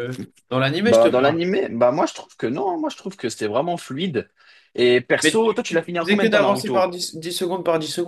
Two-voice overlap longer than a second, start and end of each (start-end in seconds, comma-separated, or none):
5.2-6.9